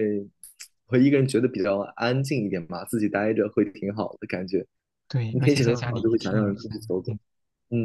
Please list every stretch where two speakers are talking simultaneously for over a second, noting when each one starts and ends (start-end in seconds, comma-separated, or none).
5.3-7.2